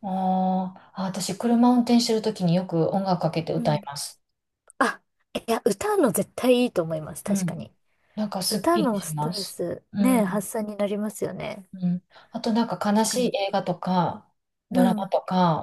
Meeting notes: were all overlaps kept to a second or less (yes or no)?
no